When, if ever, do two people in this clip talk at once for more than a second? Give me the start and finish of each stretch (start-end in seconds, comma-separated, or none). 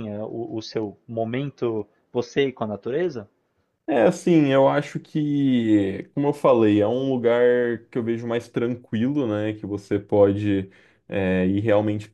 none